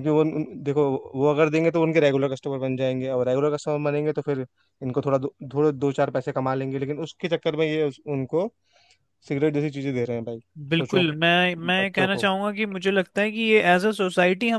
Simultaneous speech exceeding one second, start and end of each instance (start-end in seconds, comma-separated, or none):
none